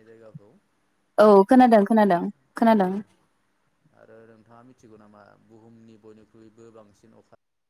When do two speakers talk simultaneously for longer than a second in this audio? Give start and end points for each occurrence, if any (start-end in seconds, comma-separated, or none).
none